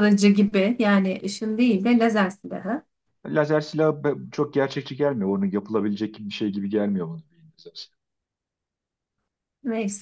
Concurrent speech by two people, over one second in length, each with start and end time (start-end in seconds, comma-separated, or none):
none